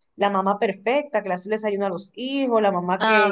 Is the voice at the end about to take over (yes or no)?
no